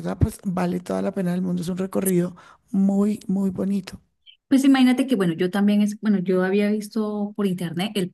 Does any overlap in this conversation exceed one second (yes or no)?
no